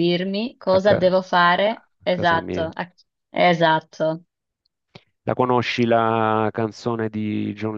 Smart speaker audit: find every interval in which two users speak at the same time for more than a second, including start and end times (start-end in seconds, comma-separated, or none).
0.7-2.7